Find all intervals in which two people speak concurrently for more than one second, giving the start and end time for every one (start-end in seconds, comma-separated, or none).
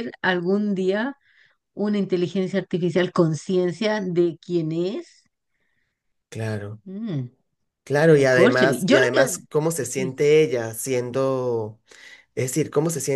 8.0-9.4